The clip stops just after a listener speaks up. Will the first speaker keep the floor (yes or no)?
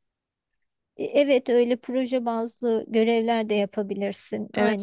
no